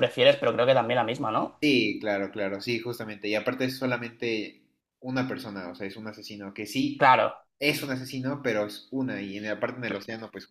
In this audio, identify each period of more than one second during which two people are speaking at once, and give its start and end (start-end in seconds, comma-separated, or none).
none